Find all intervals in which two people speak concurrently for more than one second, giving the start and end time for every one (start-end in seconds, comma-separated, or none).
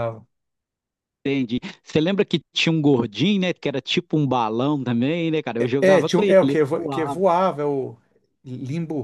5.8-7.2